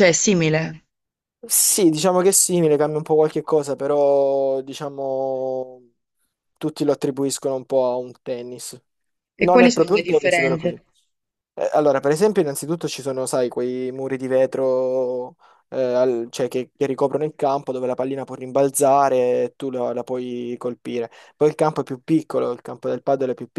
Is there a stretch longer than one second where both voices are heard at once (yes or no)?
yes